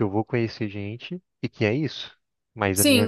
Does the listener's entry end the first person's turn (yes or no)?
yes